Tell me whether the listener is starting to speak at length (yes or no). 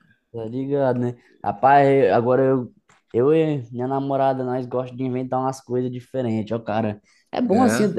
no